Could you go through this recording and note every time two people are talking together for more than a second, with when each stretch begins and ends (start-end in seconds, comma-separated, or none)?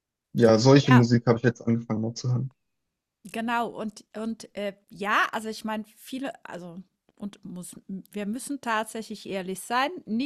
none